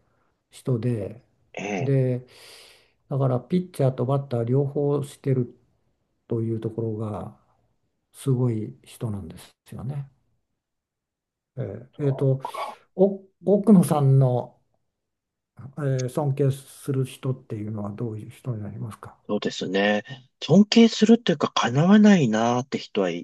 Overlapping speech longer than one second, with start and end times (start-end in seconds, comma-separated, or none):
none